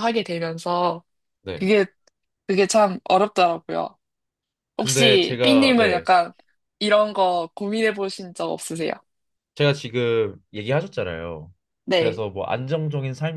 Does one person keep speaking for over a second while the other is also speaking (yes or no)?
yes